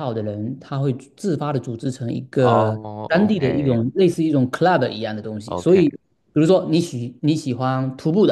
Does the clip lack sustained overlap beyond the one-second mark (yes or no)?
no